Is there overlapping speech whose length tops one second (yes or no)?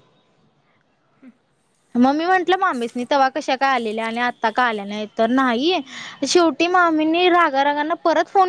no